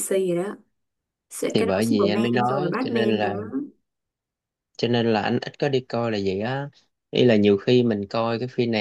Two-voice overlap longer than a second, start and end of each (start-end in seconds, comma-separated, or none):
1.5-3.3